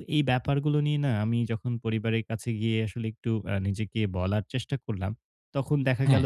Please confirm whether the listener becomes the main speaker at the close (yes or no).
no